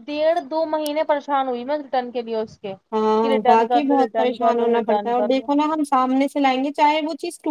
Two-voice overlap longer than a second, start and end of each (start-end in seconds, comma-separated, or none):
3.2-5.5